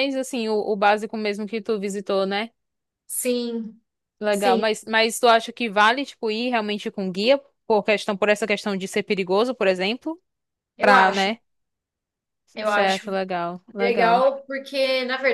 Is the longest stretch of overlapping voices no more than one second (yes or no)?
yes